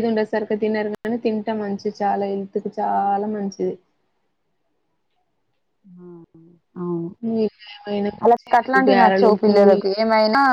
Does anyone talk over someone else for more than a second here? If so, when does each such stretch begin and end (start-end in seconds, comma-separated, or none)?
8.2-9.8